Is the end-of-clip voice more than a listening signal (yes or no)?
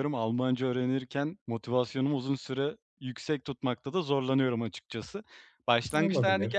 no